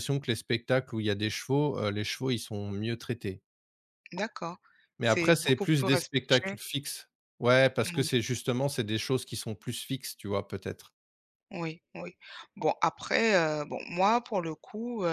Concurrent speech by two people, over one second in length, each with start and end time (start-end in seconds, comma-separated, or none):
5.0-6.6